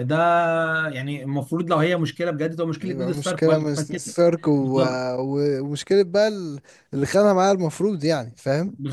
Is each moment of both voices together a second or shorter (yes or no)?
no